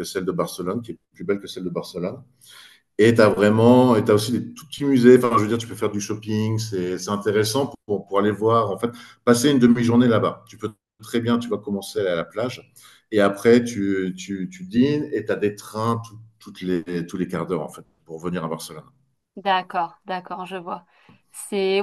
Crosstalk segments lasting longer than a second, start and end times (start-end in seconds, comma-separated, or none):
none